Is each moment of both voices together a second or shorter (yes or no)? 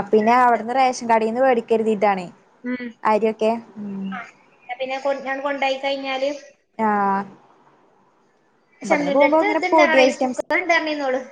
no